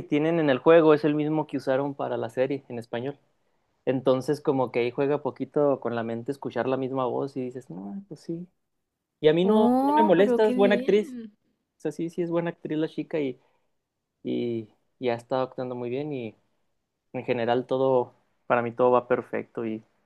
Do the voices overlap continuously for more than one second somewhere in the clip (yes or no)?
yes